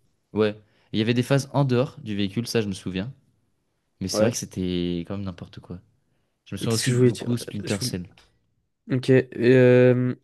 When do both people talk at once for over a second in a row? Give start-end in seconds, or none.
6.6-7.9